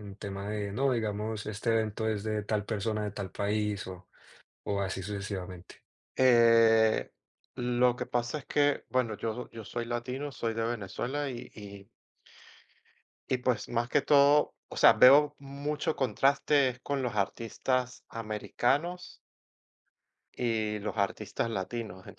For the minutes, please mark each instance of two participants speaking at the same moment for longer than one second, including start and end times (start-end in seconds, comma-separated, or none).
none